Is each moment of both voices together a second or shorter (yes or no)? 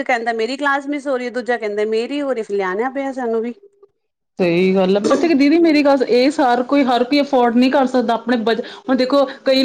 yes